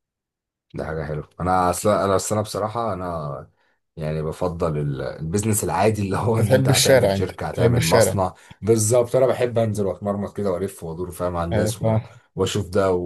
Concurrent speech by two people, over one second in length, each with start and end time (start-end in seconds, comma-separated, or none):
6.4-8.2